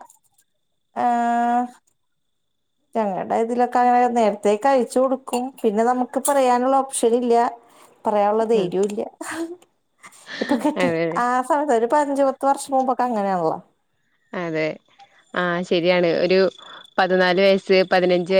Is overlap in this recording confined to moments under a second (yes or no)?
yes